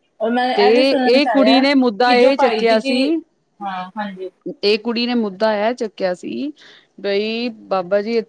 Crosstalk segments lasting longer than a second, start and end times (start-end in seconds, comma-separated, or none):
0.5-2.4